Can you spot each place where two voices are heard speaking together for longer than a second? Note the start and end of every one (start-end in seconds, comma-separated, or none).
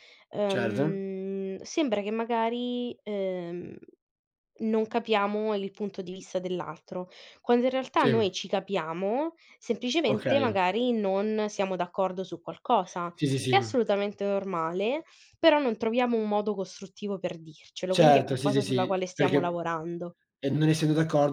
17.9-19.6